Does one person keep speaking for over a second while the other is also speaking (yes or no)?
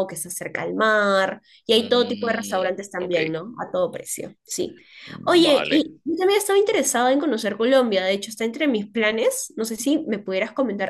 yes